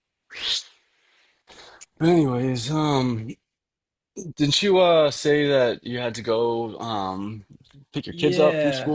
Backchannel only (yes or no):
no